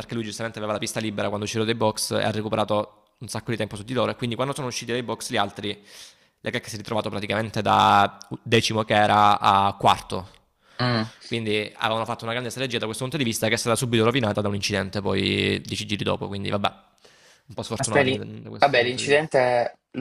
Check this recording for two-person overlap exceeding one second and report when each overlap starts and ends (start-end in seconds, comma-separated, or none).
17.8-19.3